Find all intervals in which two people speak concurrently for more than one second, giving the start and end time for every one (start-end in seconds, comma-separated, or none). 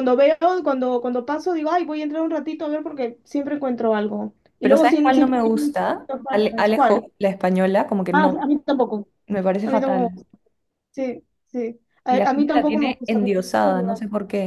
4.6-7.0, 12.1-13.8